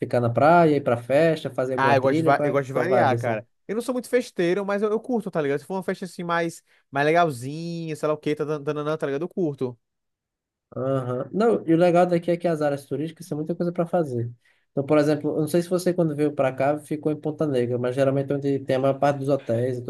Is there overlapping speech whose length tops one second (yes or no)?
yes